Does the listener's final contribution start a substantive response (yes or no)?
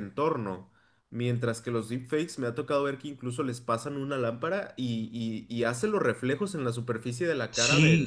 yes